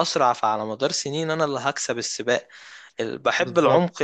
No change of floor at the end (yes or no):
yes